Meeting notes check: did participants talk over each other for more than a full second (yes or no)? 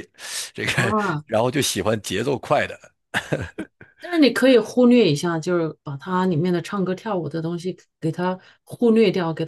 no